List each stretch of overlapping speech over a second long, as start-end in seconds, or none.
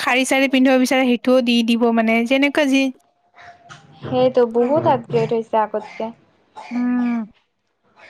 none